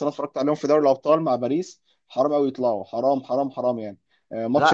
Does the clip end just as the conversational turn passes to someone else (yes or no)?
no